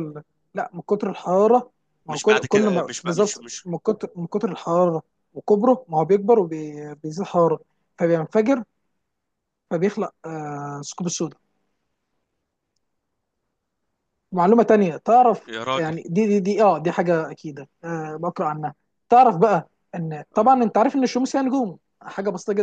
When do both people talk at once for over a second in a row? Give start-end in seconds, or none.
2.1-3.7